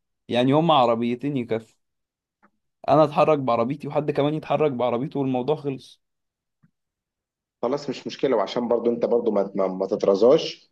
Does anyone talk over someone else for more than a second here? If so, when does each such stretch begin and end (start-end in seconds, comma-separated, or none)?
none